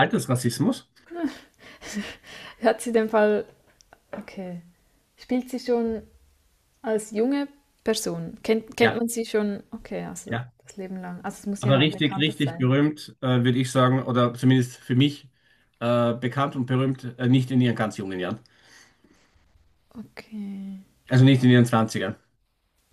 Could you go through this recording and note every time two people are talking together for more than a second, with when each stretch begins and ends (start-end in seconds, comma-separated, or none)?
11.6-12.8